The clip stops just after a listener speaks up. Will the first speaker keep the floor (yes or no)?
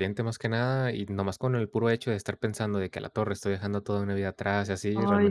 yes